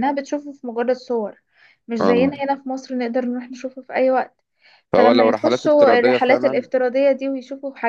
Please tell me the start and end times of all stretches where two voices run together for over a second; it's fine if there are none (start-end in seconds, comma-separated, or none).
5.0-6.7